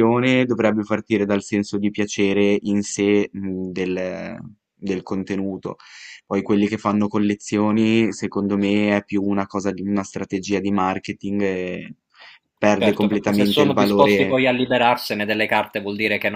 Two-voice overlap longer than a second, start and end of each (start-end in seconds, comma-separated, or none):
12.8-14.4